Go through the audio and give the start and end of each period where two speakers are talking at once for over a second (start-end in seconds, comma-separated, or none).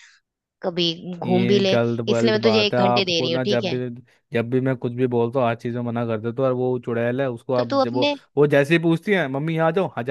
1.2-3.8